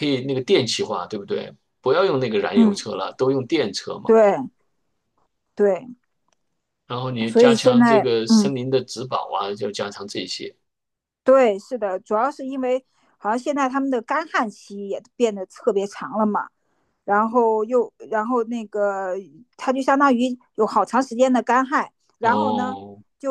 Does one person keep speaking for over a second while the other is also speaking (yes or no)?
yes